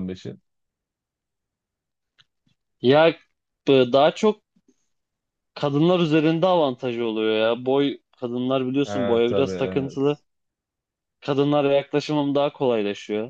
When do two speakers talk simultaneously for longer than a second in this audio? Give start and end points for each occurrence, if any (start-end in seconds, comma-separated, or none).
8.8-10.2